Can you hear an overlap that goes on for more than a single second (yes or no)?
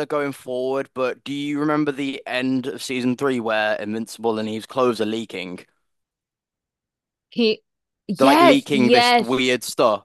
yes